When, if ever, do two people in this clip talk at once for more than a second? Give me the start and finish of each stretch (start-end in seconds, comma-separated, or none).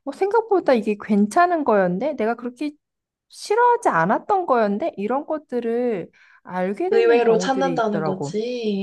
6.9-8.3